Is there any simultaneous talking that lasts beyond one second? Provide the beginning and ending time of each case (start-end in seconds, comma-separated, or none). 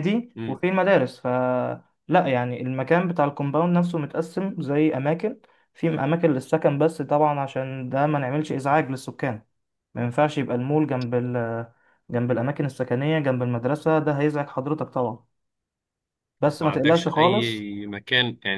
16.5-17.7